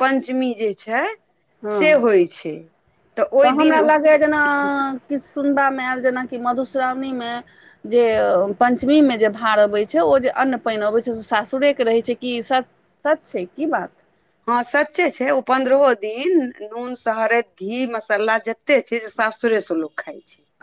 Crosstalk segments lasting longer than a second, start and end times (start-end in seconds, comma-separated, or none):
none